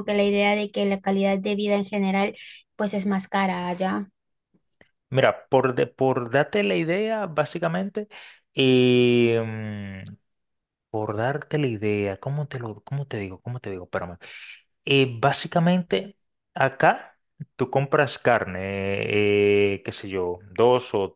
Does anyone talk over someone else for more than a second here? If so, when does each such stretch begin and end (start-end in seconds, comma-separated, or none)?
none